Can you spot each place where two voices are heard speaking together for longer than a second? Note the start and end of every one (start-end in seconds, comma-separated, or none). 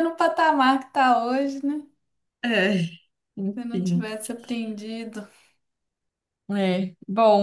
none